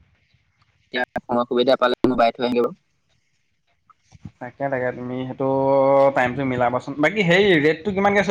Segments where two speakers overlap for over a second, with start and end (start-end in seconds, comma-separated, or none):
none